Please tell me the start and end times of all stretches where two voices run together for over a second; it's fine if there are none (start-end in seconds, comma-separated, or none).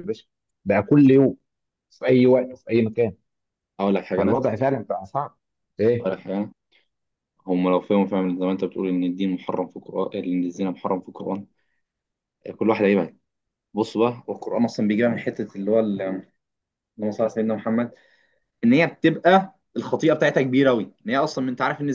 none